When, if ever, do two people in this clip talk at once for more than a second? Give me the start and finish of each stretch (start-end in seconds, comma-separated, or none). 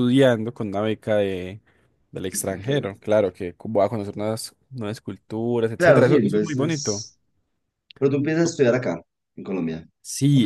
5.8-7.0